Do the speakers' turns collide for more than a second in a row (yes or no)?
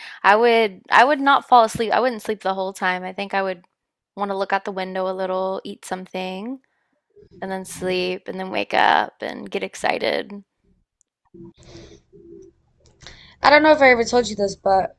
no